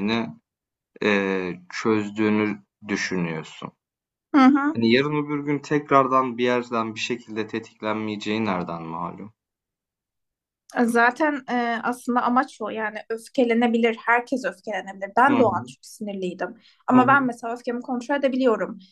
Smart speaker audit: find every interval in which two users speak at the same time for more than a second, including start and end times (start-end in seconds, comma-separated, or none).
none